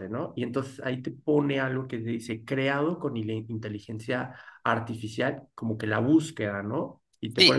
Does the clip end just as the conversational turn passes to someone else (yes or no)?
yes